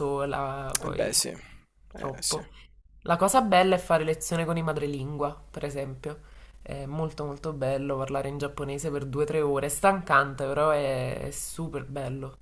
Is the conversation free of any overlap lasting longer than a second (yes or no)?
yes